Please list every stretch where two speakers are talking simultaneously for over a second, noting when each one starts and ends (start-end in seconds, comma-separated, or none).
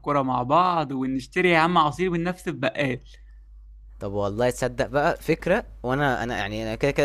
none